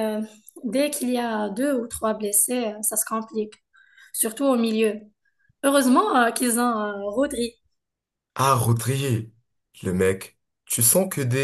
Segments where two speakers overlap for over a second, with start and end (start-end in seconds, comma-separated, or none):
none